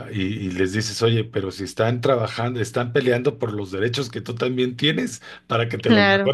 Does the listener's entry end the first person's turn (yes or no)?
no